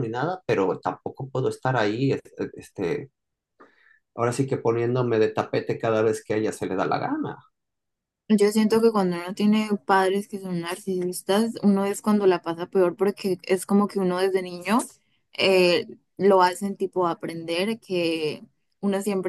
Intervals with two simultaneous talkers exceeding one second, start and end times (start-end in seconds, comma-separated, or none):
none